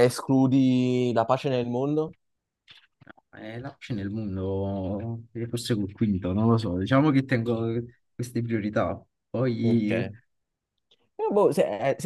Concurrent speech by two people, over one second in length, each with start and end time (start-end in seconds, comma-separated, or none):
none